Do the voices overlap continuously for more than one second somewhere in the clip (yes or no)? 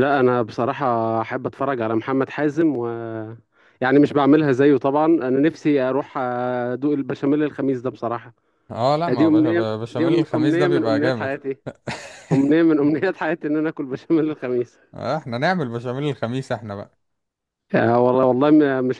yes